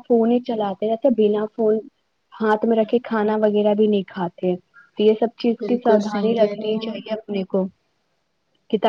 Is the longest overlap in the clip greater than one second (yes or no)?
yes